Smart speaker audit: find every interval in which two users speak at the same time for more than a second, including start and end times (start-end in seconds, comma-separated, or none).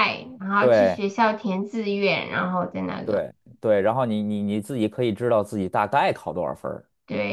none